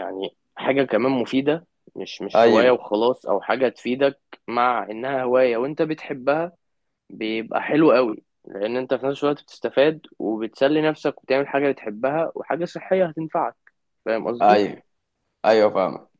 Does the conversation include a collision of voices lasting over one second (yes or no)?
no